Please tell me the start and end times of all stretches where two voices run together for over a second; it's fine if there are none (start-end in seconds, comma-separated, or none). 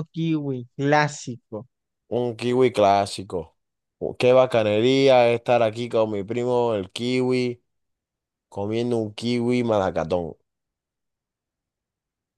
none